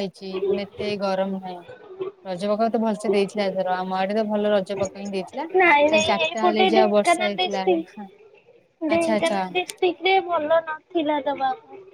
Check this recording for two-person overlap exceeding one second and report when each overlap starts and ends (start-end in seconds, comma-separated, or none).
5.6-7.6